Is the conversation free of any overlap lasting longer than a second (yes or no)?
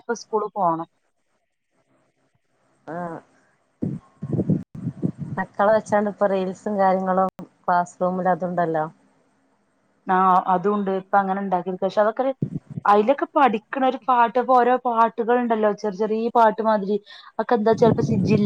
yes